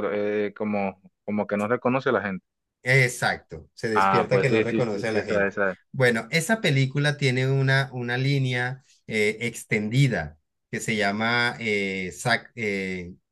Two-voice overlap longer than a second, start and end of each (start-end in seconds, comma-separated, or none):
3.9-5.5